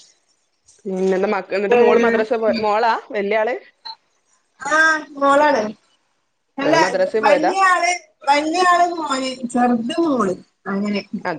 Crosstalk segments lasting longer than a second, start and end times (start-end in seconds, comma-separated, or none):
none